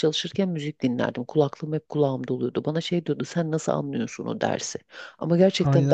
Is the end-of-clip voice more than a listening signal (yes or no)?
yes